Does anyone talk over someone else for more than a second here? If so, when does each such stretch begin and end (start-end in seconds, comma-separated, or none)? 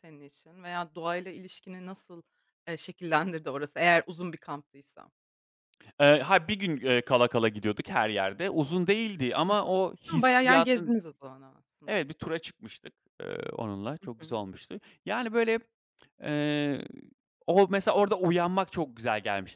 9.5-11.0